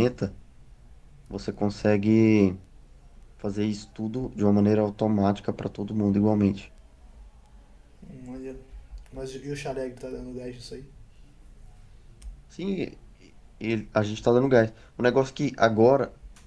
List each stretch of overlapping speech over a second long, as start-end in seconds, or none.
none